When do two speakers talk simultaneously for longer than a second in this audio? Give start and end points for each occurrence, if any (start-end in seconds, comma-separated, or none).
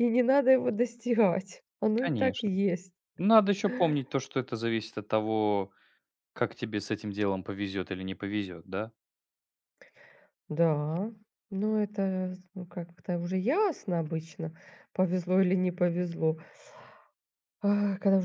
none